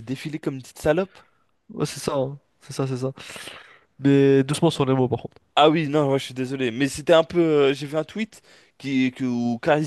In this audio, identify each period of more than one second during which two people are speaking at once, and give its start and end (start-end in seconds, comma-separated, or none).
none